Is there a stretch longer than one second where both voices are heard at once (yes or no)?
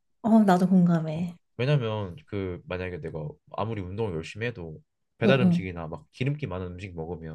no